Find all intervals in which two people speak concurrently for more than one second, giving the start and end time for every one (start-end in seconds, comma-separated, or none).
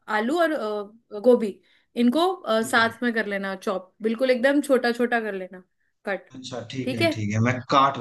none